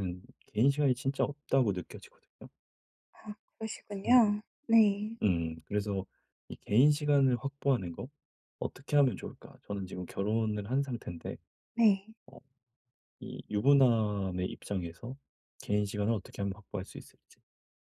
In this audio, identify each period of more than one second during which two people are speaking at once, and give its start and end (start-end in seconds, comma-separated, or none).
none